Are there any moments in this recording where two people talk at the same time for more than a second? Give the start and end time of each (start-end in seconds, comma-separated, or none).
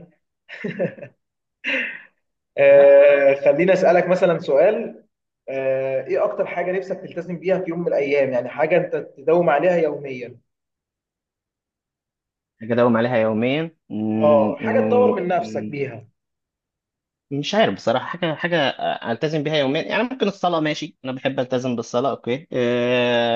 14.2-15.8